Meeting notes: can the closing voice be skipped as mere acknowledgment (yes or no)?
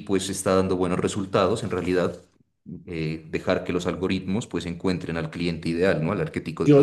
no